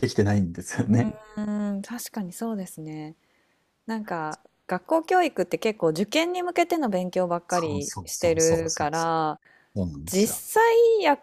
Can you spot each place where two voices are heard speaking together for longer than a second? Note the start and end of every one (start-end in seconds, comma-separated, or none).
7.5-9.1